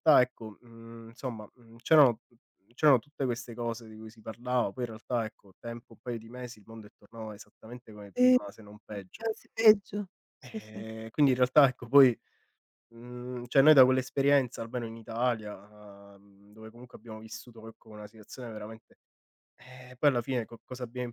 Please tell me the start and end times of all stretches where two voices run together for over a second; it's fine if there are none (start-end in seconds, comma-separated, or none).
none